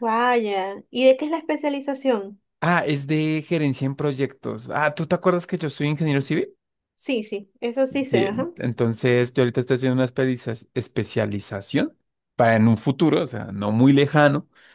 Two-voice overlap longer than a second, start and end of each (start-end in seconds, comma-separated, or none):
none